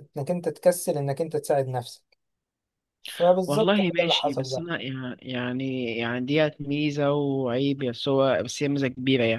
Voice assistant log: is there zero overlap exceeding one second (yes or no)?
no